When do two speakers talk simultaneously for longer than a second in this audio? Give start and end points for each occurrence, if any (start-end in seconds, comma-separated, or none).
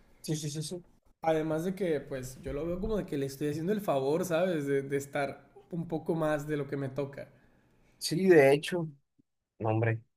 none